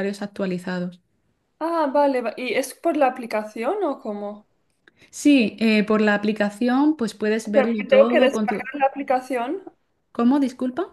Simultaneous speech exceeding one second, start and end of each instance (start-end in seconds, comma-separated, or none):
7.4-8.7